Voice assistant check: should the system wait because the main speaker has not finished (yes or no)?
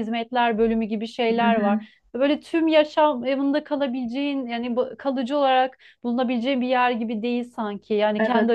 no